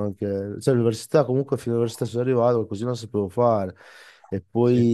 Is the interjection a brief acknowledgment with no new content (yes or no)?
yes